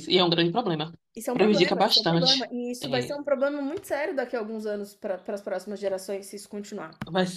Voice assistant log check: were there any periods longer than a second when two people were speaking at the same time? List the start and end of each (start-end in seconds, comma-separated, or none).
1.3-3.1